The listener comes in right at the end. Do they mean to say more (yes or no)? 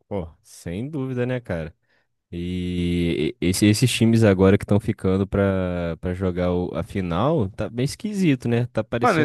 yes